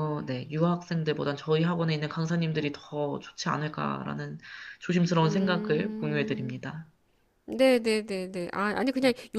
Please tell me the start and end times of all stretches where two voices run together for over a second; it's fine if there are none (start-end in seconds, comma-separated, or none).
5.2-6.6